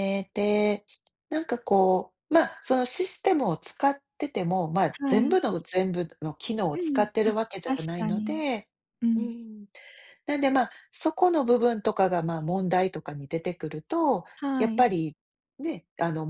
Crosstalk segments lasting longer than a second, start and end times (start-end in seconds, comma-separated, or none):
6.7-8.4